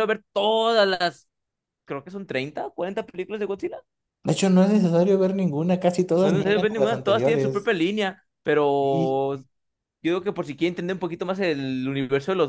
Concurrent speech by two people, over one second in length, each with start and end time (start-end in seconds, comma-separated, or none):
6.2-7.7